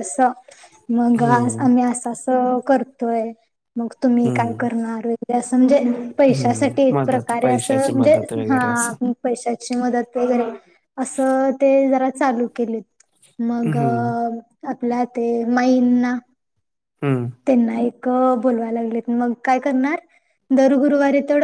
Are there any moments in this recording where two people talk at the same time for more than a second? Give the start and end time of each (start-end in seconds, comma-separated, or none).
6.3-8.6